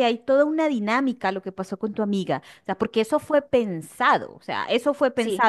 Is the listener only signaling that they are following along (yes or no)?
yes